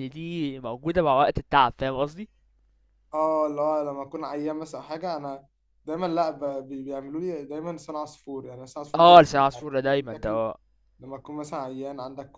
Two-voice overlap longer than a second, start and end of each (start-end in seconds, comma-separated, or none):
9.0-10.4